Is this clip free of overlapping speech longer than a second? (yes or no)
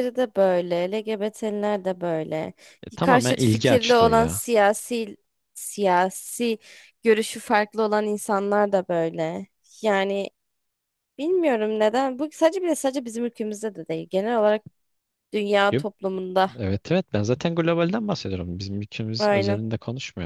no